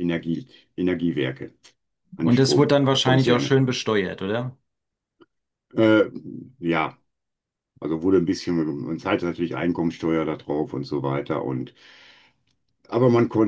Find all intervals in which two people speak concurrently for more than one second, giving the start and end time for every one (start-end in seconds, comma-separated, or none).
2.2-3.5